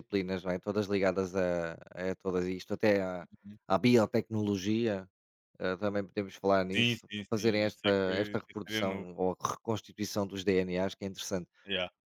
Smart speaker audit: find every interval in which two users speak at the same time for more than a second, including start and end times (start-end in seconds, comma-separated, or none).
6.7-9.1